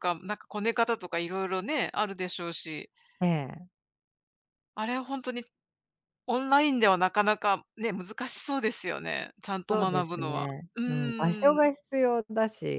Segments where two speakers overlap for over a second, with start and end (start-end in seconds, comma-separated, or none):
9.7-11.7